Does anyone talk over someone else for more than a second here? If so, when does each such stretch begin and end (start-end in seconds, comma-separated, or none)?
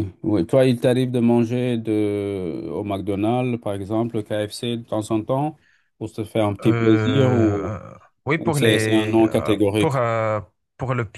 8.4-10.0